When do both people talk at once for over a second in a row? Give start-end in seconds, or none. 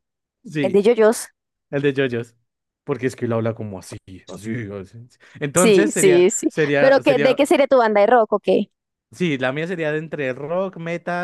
5.5-7.4